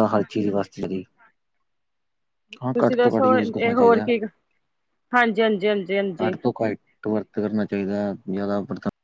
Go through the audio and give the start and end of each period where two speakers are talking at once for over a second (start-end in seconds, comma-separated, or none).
2.7-4.1